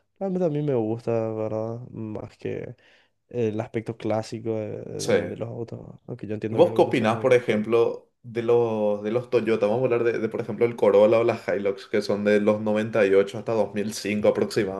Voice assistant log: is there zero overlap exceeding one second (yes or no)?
no